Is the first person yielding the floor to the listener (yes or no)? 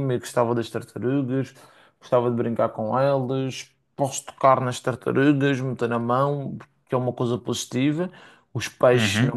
no